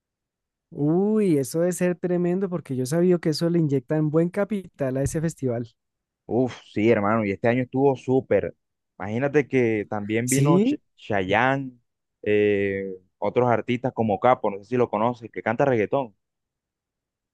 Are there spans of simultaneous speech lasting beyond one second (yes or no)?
no